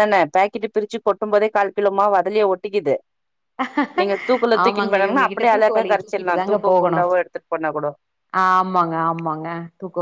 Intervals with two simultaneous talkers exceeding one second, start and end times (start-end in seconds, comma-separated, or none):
4.6-7.0